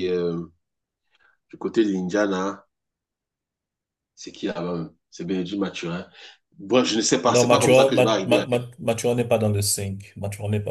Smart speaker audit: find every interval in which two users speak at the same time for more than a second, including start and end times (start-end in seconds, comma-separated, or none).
7.3-8.5